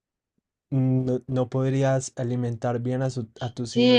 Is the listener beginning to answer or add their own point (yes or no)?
yes